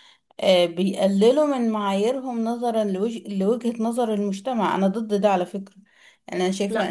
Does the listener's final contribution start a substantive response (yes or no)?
no